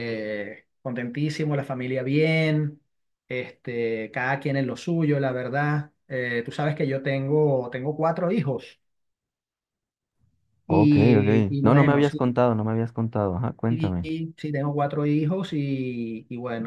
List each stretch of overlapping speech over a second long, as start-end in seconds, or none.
10.7-12.2